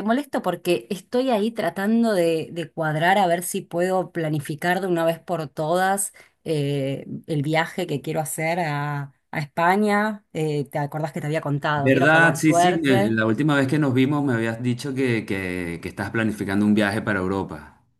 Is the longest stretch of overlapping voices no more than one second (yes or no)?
no